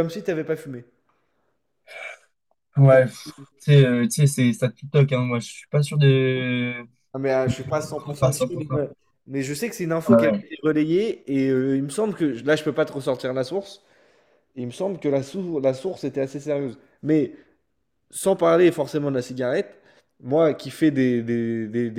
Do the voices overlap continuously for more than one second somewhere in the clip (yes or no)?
no